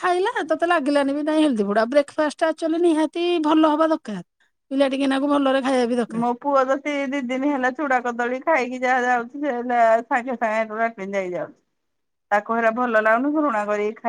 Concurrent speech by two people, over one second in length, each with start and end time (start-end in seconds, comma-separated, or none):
none